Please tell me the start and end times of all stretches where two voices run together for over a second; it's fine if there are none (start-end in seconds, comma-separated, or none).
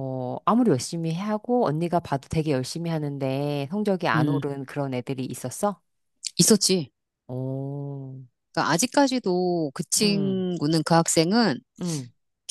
none